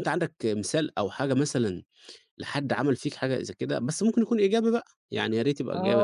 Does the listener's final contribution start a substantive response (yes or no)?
yes